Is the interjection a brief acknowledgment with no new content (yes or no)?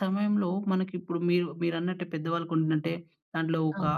yes